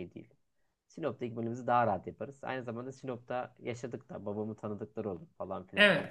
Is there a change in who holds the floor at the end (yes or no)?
yes